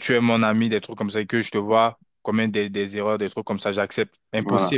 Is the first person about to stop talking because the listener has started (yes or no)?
yes